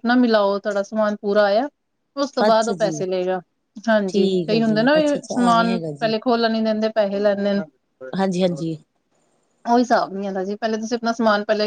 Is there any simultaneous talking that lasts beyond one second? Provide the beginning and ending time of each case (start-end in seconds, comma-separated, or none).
4.1-6.1